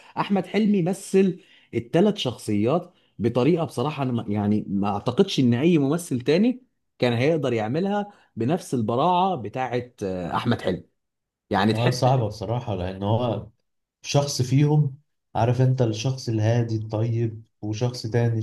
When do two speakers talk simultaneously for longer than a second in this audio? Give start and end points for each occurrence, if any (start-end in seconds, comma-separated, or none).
none